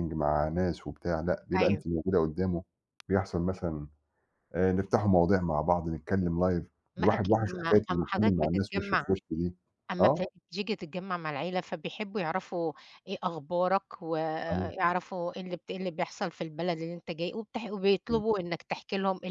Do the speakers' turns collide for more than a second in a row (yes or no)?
yes